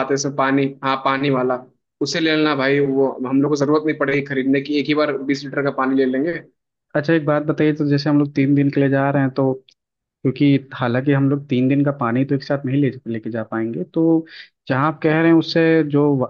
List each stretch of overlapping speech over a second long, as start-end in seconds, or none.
none